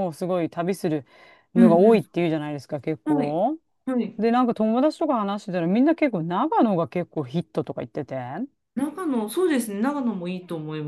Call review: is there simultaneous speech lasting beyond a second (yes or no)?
no